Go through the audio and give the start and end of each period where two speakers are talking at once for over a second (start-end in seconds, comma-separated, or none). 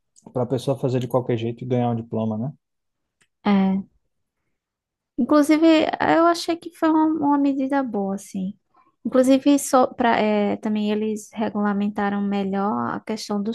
none